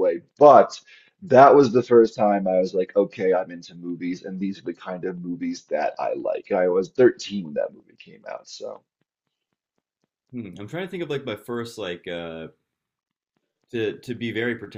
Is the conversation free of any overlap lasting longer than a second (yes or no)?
yes